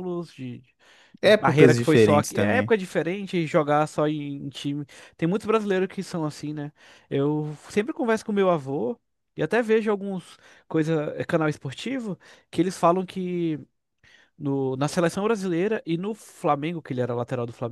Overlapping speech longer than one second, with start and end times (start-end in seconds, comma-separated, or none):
1.2-2.7